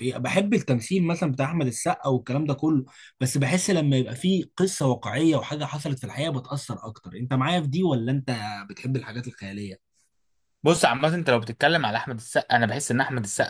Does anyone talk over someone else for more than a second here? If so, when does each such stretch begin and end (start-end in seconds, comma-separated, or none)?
none